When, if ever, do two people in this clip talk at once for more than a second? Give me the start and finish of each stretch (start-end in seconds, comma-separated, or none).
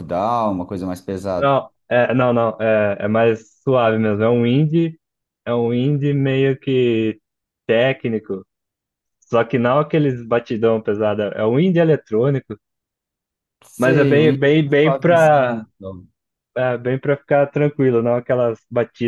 13.8-15.6